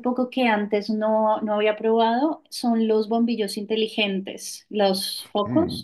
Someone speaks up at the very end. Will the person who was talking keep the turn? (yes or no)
no